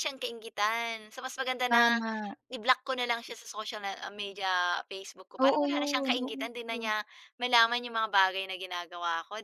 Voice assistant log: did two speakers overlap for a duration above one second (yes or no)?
yes